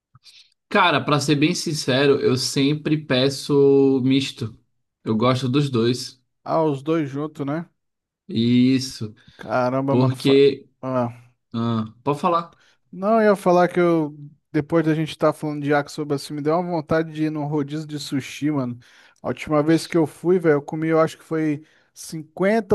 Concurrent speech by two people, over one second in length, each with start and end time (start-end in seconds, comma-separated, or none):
none